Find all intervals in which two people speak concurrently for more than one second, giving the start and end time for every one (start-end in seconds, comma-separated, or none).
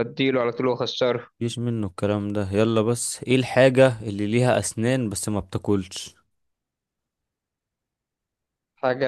none